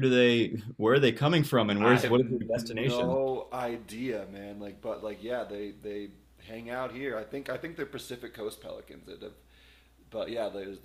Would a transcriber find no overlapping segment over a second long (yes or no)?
no